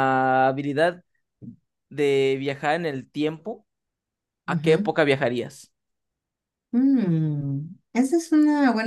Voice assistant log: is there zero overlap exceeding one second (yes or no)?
yes